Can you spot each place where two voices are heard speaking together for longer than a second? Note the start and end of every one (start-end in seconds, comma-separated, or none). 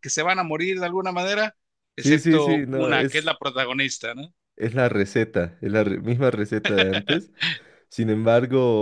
2.0-3.3